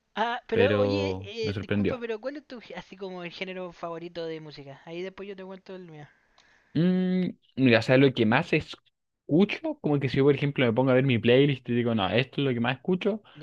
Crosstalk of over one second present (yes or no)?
yes